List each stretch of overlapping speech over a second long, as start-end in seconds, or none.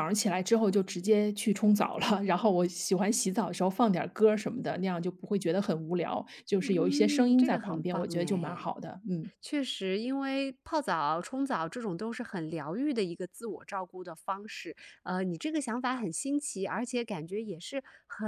6.6-8.7